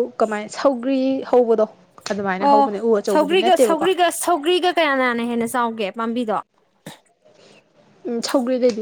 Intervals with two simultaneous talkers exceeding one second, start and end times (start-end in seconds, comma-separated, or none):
none